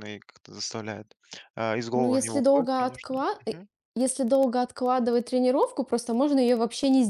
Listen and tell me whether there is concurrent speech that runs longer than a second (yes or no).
yes